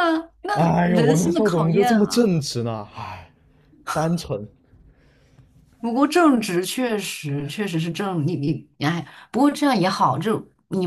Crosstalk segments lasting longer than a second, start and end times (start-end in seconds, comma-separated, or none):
0.5-2.3